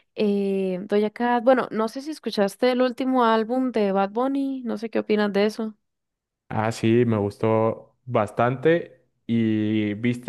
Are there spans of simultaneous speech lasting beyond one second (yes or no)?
no